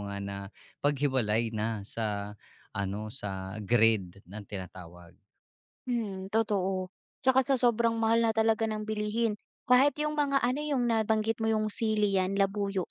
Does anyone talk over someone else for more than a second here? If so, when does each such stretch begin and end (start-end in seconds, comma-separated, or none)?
none